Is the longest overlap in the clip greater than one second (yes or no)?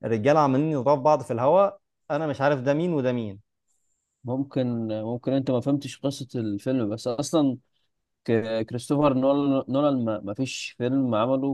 no